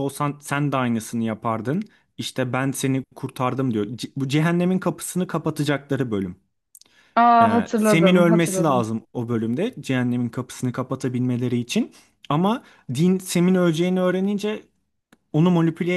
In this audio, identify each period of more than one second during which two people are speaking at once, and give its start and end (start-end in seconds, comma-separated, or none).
7.4-8.9